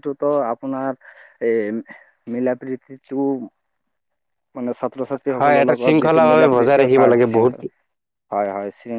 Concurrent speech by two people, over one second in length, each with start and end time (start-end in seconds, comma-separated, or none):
5.4-7.1